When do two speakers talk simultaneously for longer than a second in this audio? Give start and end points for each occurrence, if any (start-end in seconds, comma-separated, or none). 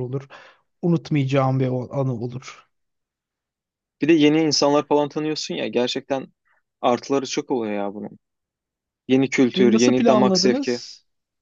9.6-10.8